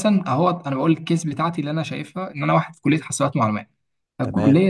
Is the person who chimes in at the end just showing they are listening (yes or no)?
yes